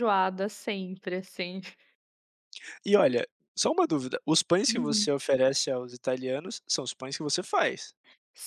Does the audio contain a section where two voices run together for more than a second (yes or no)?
no